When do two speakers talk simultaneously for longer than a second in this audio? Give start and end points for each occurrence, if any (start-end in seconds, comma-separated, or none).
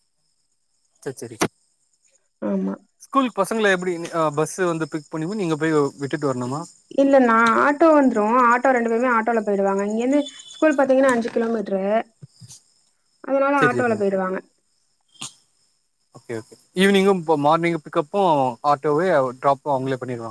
none